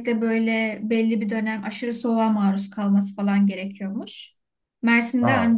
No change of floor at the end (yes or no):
yes